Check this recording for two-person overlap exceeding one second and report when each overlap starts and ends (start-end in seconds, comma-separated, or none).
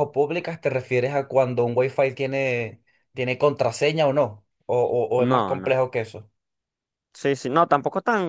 none